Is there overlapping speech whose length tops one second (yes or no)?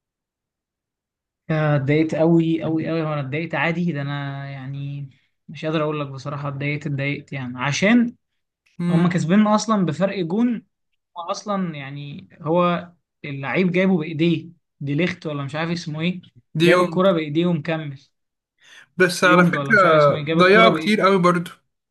yes